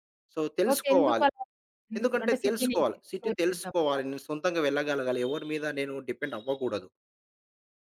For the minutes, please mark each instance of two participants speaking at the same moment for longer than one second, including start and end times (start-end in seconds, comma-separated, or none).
2.0-4.0